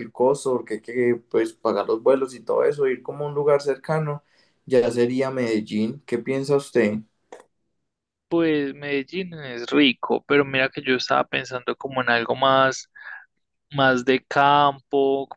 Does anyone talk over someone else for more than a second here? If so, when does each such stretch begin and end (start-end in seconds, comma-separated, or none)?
none